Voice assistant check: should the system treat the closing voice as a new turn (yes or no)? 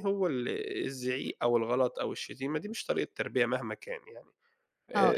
yes